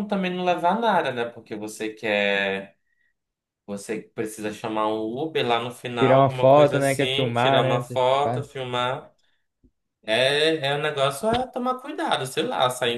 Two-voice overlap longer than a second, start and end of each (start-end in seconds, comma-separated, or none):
6.0-8.5